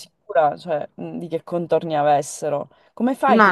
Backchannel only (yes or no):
yes